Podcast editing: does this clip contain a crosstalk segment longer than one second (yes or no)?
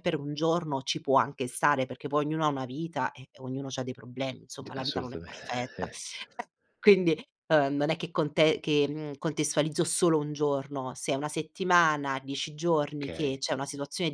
yes